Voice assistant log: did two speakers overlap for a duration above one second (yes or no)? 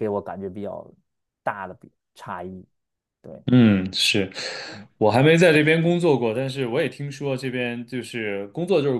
no